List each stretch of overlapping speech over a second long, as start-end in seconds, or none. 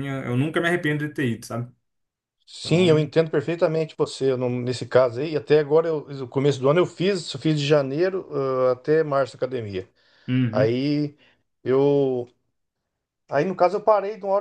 none